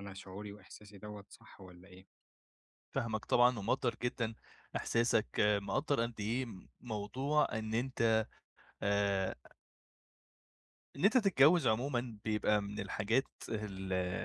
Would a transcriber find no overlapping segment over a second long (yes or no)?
yes